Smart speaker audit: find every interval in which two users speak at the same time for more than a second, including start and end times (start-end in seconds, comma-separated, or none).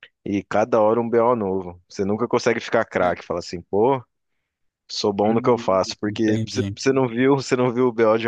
5.3-6.8